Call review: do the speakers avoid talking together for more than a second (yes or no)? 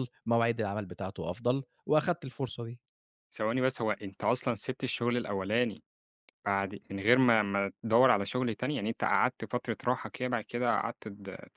yes